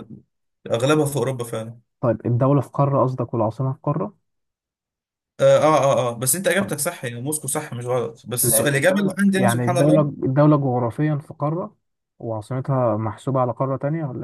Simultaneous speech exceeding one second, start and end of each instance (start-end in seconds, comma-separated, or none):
8.4-10.1